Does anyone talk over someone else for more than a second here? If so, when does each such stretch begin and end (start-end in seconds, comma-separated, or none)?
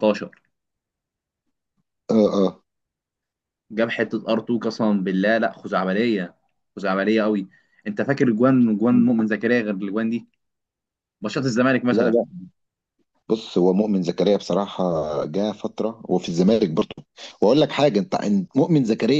none